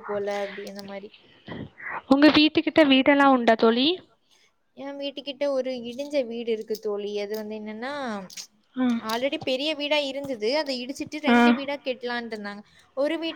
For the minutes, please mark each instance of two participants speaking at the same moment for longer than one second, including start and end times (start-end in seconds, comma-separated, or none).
none